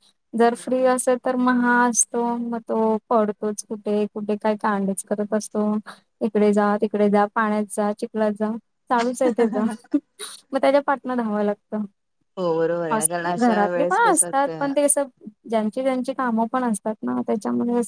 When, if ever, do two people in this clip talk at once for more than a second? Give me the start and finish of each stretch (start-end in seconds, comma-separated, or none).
13.4-14.7